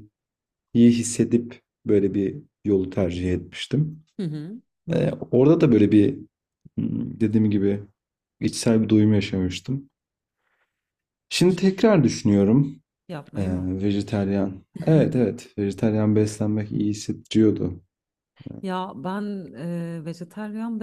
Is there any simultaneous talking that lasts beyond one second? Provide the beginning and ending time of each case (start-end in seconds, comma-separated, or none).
none